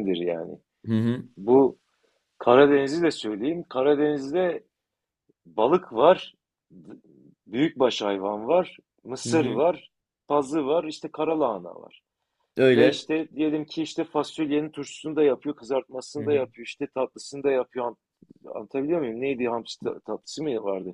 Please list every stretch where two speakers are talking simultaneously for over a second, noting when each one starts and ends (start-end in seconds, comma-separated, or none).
none